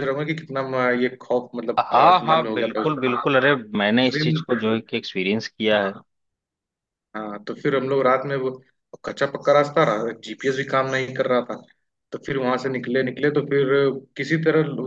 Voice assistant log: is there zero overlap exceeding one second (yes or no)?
no